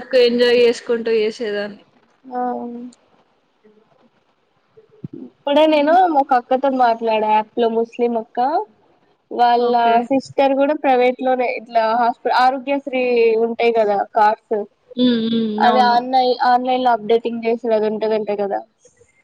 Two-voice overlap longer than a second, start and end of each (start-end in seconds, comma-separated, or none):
none